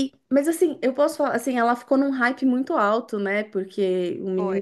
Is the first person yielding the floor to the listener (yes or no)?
no